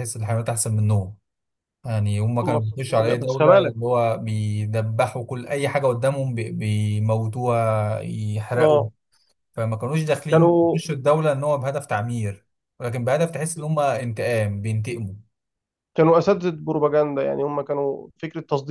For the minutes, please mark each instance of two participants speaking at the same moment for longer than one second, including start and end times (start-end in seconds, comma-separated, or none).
2.4-3.8